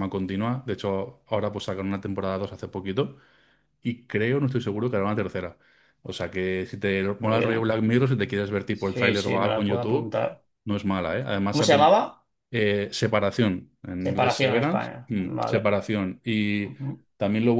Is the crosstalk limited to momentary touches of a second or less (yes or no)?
no